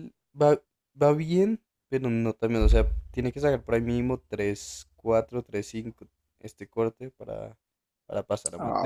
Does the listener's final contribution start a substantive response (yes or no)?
yes